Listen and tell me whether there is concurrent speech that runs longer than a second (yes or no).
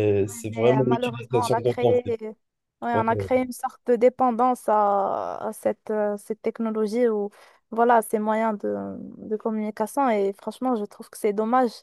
yes